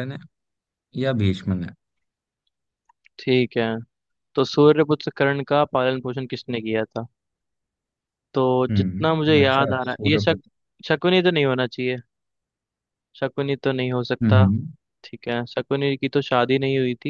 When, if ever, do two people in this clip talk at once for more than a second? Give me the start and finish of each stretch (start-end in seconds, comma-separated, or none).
8.7-10.2